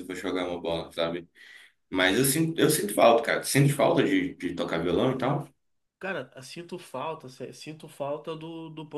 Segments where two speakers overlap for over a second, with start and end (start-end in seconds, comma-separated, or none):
none